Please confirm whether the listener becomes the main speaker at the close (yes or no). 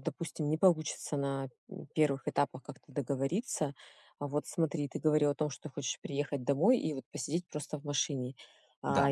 no